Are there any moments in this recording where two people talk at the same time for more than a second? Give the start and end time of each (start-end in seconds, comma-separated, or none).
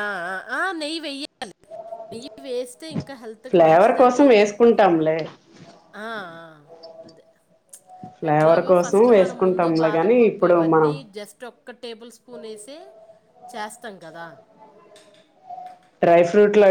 8.3-11.0